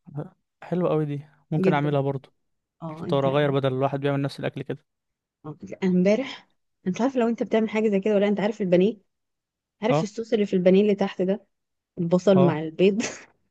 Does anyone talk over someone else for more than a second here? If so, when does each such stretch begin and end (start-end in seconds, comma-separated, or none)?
none